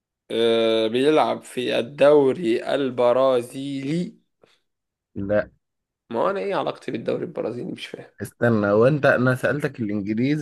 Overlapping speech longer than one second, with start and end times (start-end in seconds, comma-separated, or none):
none